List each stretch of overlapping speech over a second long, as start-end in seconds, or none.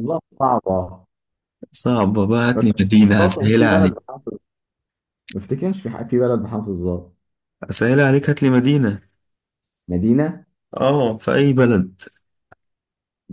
2.5-4.0